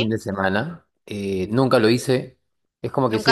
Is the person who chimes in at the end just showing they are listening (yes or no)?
no